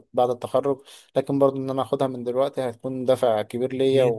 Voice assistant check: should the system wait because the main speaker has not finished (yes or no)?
no